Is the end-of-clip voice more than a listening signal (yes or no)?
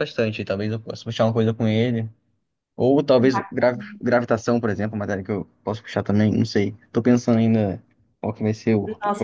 yes